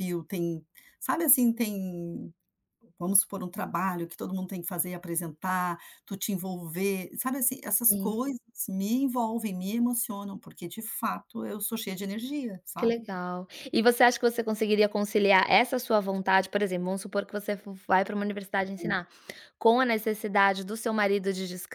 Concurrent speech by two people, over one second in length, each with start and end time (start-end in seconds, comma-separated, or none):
none